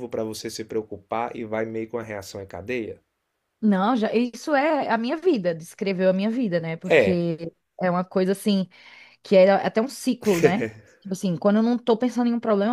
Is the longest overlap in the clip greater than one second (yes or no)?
no